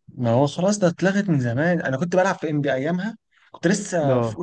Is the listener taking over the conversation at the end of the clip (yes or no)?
no